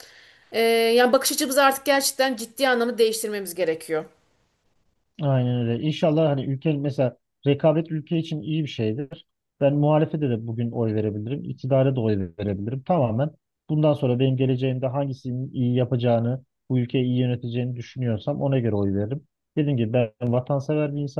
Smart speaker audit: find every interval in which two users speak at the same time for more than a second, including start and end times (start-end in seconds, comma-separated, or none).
none